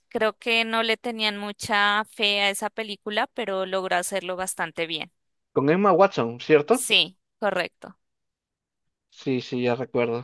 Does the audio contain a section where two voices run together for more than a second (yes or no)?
no